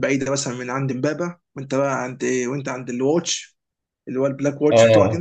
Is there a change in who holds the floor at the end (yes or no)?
yes